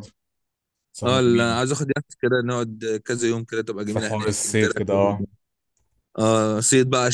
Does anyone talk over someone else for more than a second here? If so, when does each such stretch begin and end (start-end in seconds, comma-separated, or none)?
3.8-5.2